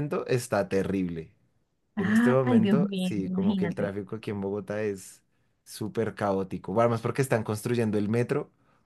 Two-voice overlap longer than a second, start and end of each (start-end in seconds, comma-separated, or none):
2.0-3.9